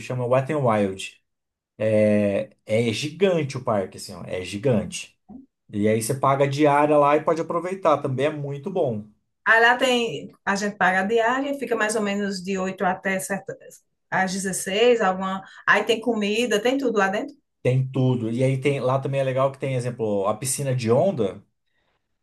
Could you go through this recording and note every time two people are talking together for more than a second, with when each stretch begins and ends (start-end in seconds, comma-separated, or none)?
none